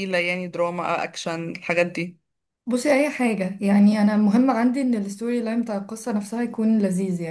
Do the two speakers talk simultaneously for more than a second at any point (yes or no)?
no